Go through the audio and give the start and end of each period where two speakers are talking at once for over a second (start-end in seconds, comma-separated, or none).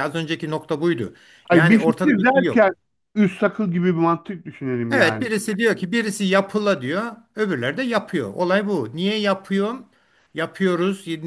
1.5-2.7